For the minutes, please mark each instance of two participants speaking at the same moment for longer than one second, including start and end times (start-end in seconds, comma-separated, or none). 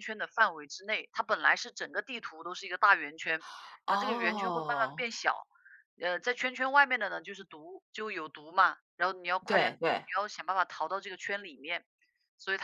3.9-5.1